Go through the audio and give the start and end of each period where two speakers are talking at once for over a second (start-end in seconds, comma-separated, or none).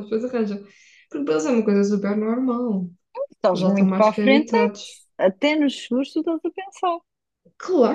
3.5-5.0